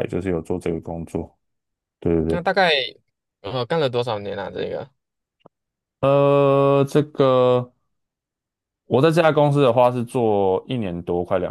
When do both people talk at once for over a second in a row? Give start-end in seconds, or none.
none